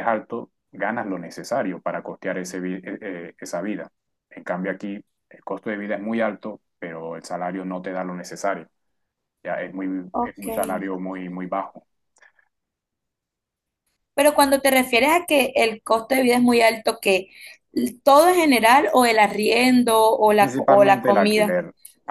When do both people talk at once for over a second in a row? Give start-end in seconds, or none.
20.4-21.6